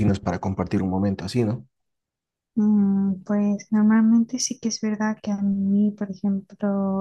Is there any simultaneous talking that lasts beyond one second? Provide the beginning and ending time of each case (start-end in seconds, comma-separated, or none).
none